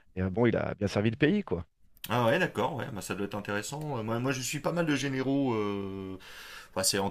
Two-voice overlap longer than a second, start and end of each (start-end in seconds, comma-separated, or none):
none